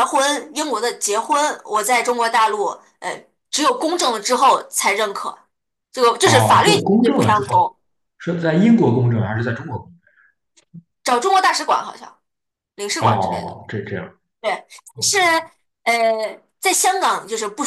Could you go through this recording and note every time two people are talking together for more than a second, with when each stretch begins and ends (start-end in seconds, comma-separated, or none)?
6.2-7.7